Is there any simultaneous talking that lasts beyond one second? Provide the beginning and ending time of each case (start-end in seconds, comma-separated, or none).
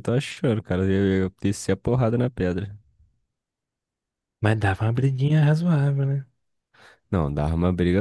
none